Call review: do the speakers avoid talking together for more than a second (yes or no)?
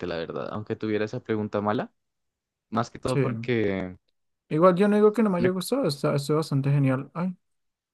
yes